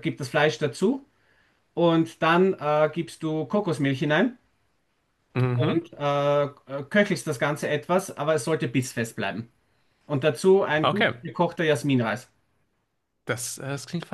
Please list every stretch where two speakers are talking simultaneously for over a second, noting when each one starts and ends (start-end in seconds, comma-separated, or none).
none